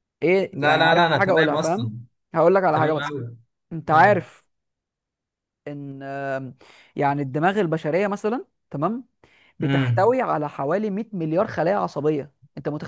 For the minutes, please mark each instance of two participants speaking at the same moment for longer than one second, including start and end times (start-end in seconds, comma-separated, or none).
0.5-1.9